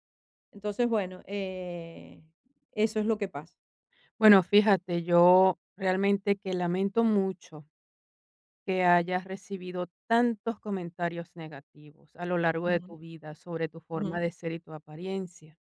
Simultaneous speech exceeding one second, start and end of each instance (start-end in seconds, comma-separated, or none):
none